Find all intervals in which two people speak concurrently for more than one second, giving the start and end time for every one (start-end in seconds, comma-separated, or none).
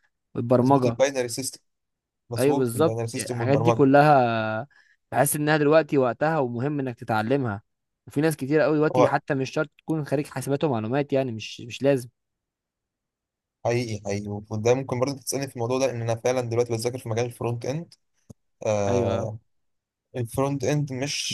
2.4-3.9